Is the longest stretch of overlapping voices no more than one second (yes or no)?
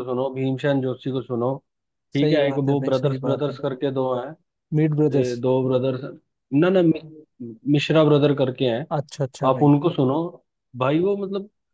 no